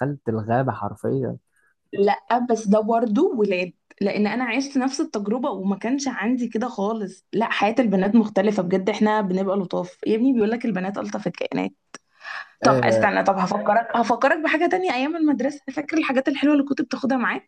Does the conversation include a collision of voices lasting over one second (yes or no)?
no